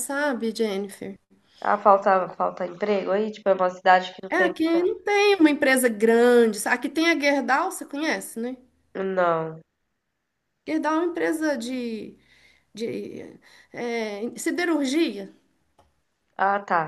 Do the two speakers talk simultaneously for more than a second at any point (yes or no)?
no